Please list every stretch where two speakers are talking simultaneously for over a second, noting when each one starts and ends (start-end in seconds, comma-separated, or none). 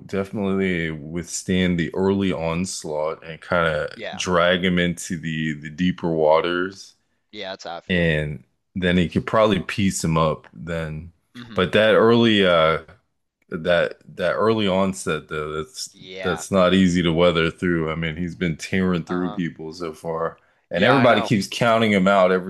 none